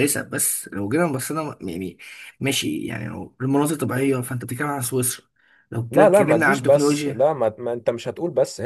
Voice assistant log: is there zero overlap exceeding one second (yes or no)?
no